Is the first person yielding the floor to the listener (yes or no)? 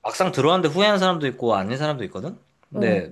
no